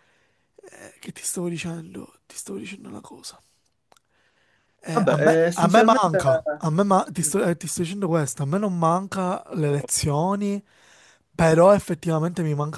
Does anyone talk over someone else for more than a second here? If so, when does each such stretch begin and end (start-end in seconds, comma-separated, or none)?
4.9-6.4